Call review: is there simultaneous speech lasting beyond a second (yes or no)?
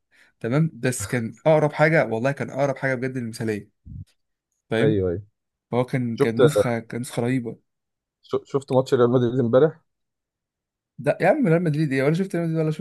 no